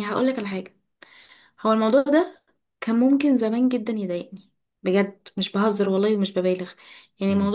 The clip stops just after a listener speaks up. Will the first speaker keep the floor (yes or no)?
yes